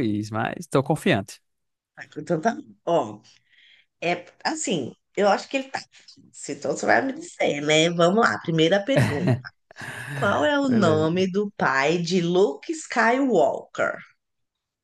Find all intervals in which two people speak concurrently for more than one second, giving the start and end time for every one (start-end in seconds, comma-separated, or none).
none